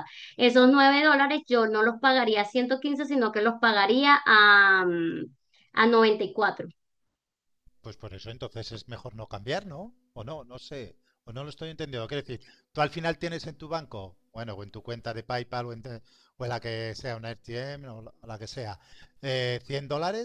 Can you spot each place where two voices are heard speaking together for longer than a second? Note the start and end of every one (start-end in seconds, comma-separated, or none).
none